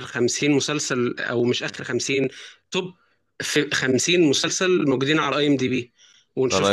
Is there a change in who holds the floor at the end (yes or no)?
no